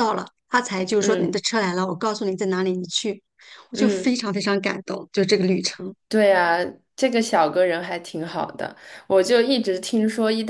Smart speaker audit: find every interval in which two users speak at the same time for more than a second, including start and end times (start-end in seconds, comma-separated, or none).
none